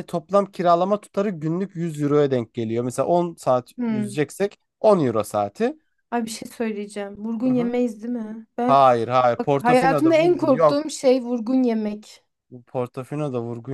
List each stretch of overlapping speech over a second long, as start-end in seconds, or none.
9.4-10.8